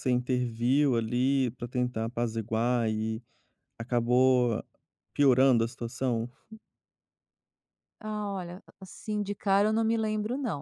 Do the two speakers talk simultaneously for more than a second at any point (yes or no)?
no